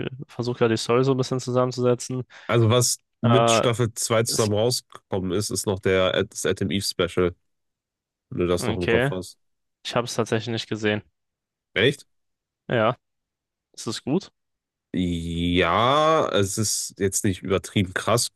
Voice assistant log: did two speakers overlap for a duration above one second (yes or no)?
no